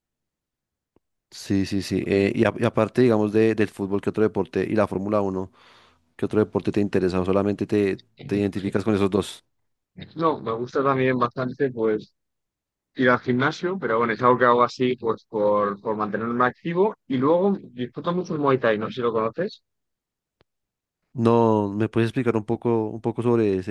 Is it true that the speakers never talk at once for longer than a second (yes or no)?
yes